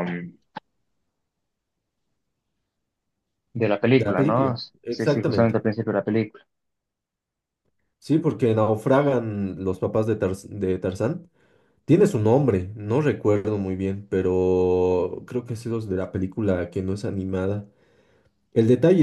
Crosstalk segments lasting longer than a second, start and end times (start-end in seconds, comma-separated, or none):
3.9-5.6